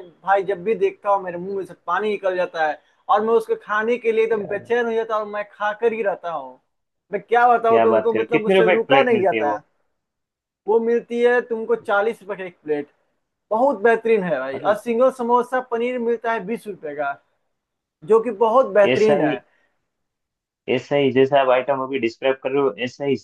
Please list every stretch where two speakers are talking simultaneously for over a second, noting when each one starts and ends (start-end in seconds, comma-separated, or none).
7.7-9.6